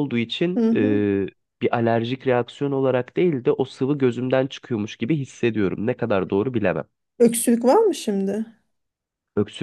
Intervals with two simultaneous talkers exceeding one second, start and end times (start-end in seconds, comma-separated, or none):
none